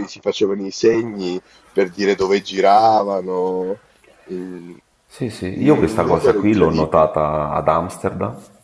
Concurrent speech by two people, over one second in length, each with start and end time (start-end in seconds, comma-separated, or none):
5.5-7.2